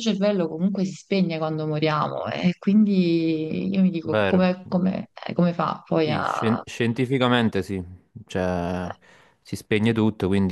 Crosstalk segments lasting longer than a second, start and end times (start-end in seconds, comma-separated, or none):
none